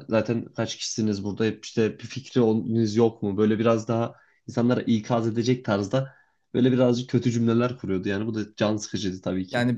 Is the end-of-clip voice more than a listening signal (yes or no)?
yes